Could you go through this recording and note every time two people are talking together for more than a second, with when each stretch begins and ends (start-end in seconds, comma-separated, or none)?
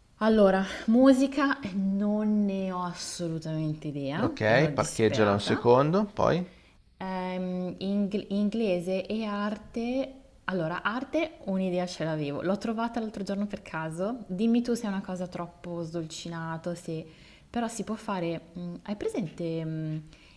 4.2-5.6